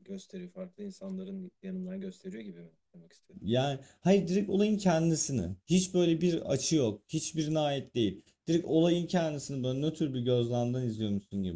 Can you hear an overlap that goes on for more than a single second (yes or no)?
no